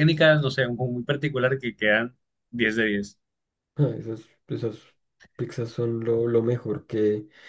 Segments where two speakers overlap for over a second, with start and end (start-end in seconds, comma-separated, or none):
none